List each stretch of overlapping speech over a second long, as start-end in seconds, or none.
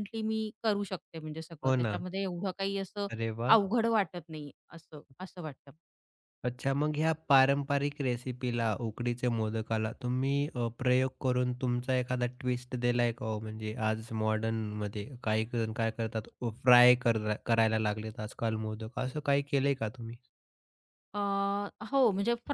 none